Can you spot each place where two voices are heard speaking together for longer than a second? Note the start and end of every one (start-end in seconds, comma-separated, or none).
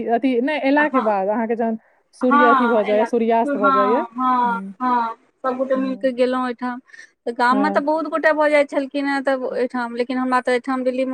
2.3-4.1